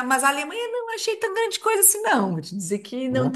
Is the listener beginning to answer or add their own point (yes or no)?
no